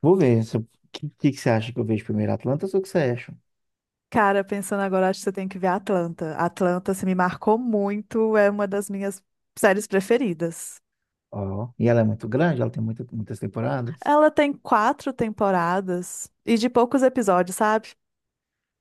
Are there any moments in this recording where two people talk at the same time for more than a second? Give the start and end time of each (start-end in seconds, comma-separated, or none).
none